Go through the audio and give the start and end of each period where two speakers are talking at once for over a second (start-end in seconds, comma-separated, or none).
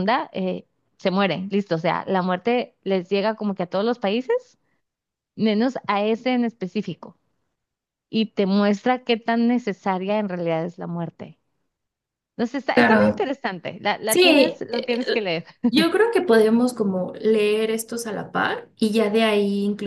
14.1-15.3